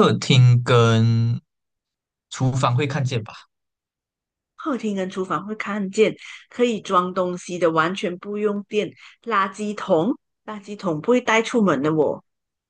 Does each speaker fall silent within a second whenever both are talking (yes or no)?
yes